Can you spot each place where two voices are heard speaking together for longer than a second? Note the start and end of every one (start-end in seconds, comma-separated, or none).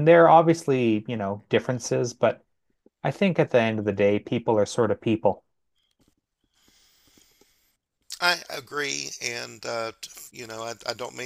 none